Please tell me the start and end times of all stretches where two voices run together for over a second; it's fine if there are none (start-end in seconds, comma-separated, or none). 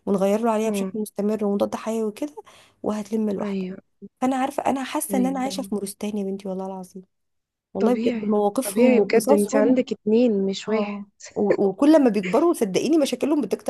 7.8-9.8